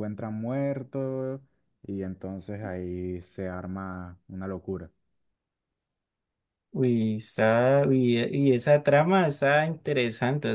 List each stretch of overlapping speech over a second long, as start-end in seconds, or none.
none